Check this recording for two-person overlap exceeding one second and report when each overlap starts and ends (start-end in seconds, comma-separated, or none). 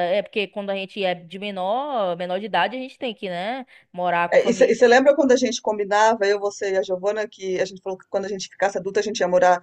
none